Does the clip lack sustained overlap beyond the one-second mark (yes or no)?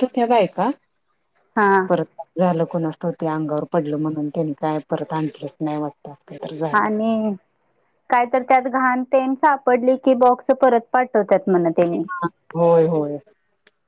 yes